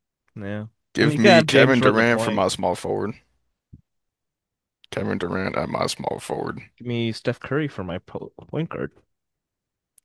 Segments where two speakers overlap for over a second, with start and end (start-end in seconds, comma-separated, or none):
1.0-2.5